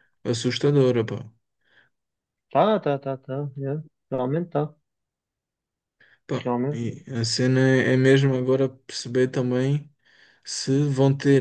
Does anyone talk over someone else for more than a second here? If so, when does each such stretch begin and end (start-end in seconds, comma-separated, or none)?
none